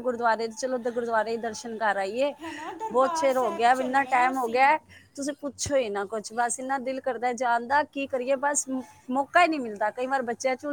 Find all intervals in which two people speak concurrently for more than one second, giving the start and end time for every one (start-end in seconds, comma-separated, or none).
2.9-4.7